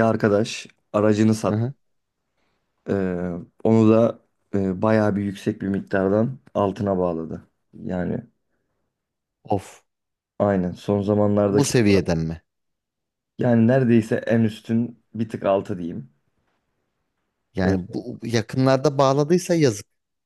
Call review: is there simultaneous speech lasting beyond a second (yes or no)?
no